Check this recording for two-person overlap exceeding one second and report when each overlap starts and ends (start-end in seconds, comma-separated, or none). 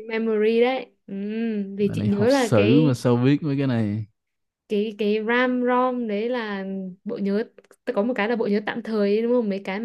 1.8-3.0